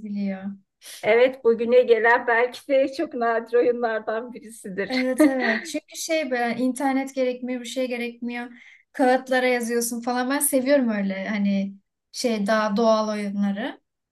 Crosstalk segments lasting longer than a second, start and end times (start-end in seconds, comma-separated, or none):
none